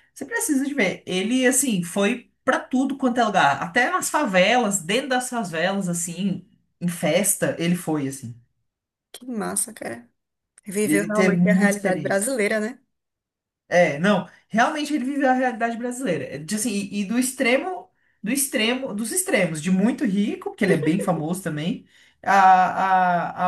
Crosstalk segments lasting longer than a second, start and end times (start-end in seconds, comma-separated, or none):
10.9-12.3